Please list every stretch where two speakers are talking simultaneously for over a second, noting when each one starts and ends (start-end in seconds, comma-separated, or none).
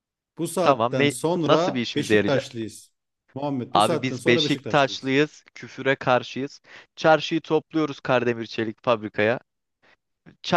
0.6-2.5, 3.7-5.1